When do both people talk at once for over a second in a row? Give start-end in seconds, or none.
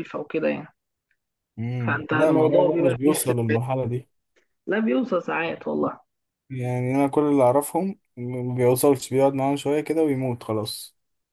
1.9-3.6